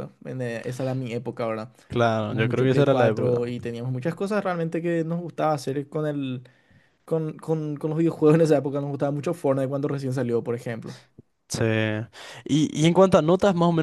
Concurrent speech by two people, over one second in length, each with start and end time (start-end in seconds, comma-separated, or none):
2.1-3.5